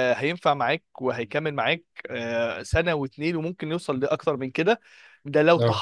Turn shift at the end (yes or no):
no